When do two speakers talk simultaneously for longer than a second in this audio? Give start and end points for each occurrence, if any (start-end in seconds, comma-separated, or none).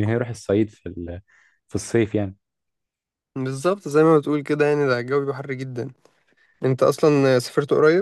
none